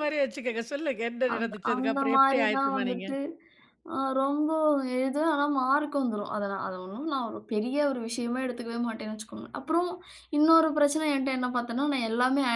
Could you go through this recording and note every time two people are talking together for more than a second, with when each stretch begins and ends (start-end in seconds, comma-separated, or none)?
1.3-3.1